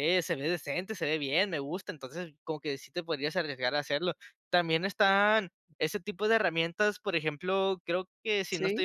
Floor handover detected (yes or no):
no